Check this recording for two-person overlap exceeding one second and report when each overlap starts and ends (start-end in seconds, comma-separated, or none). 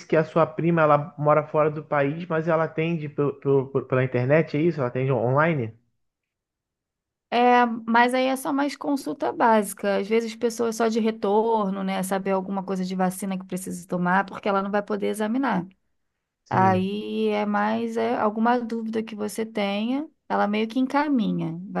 none